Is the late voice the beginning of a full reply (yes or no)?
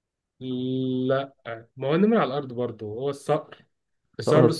no